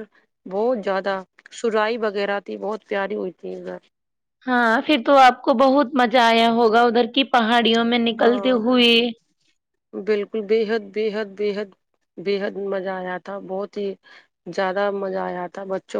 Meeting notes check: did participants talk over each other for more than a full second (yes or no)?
no